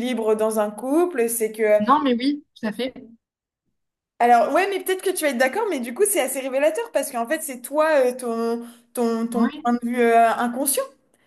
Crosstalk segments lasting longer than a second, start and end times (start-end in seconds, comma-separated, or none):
none